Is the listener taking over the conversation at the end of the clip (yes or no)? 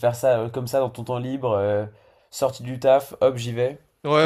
yes